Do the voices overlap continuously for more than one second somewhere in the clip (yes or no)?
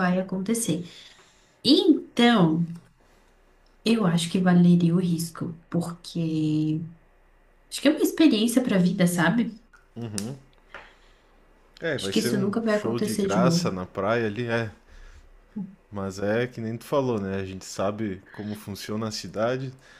yes